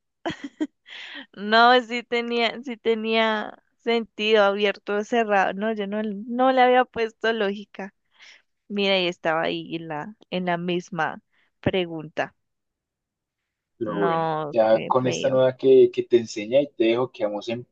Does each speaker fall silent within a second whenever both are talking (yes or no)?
no